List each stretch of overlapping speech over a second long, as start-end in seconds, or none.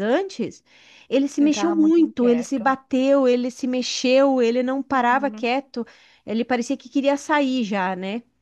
1.4-2.7